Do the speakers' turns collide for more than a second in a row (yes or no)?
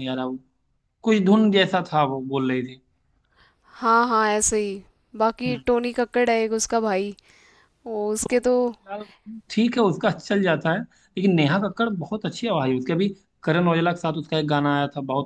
no